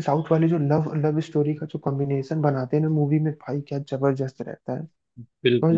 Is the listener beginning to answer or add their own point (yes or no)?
yes